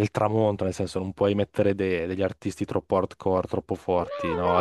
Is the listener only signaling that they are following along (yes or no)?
no